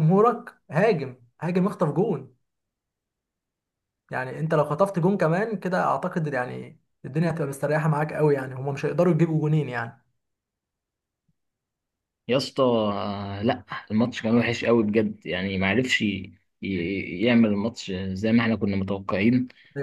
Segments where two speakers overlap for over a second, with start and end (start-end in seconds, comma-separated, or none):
none